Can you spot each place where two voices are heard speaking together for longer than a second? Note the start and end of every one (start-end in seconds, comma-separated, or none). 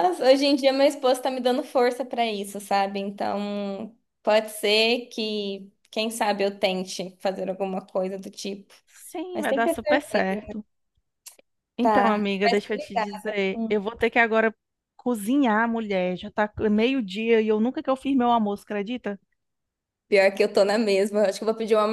11.8-13.8